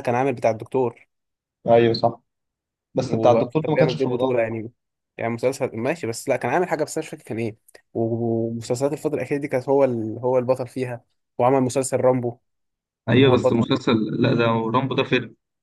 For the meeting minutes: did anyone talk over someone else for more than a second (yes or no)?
yes